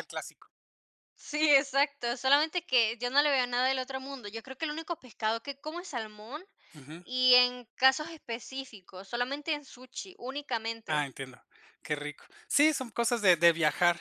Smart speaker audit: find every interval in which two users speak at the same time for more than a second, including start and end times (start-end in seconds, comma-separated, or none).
none